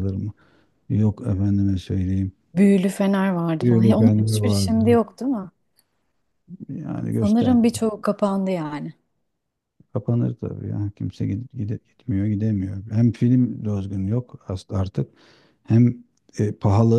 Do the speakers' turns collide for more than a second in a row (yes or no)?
yes